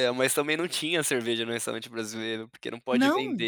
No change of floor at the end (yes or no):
yes